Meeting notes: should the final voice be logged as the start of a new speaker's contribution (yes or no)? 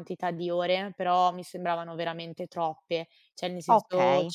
no